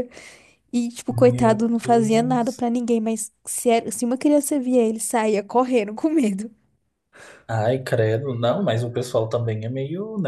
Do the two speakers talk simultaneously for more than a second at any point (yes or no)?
yes